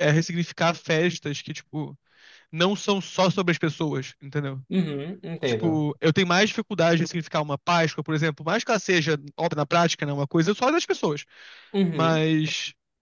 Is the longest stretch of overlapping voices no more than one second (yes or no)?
yes